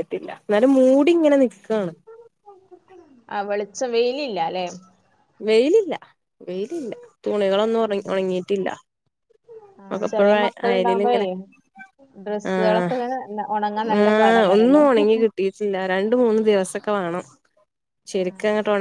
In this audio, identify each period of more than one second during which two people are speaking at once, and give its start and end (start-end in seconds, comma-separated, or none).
none